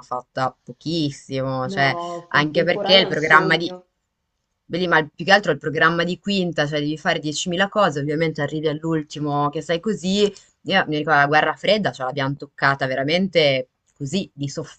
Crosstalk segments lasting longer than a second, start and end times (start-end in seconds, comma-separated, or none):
1.7-3.7